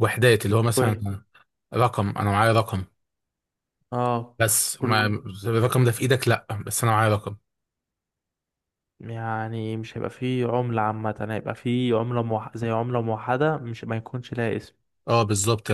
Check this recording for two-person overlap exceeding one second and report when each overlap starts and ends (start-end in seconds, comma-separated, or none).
none